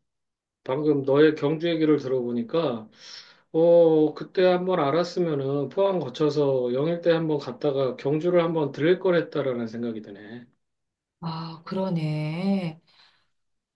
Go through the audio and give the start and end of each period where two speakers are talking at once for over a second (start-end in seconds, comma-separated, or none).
none